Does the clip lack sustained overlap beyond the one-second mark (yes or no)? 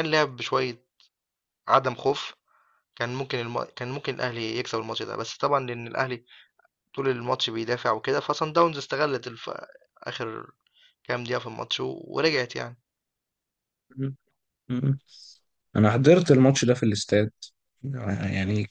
yes